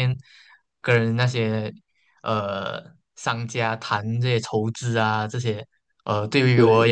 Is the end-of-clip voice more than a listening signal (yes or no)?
no